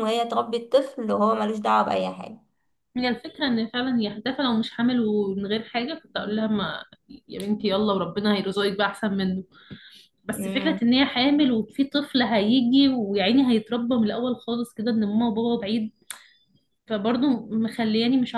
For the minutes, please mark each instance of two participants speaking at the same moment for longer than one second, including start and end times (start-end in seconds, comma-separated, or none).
none